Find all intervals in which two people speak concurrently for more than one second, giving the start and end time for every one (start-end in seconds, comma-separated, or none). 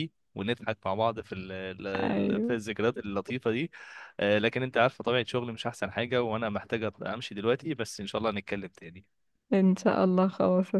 none